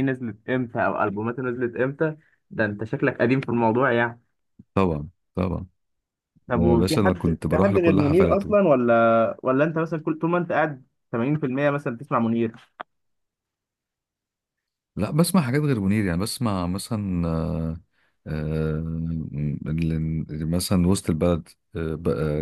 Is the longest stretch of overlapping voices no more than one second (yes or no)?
no